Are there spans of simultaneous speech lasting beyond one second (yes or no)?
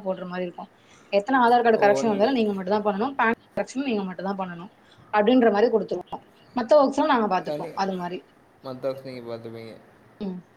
no